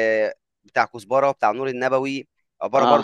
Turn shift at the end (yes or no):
no